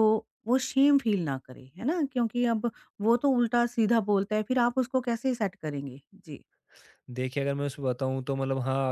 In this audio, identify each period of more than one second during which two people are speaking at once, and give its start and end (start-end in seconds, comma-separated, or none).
none